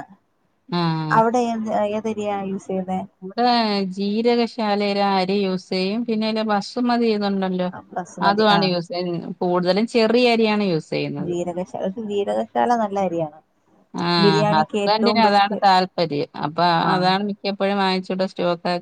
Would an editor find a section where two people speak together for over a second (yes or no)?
yes